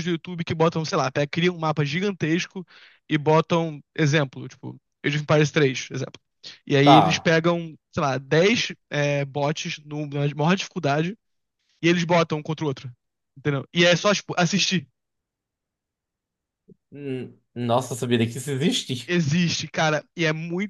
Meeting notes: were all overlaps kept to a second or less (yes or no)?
yes